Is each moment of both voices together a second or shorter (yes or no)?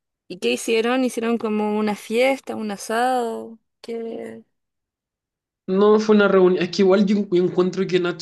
yes